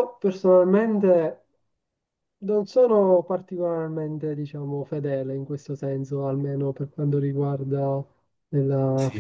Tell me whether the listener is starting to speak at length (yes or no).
no